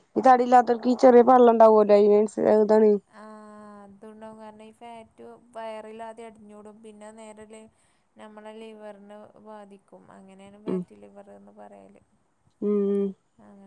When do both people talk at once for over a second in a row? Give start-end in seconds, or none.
none